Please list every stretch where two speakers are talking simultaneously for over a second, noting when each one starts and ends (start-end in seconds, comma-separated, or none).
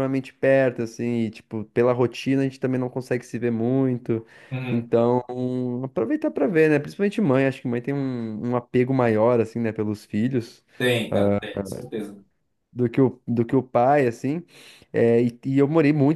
none